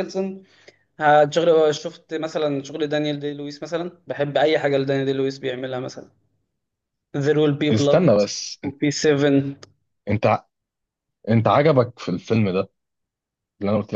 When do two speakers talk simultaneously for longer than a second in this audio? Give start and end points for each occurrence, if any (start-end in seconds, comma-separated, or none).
none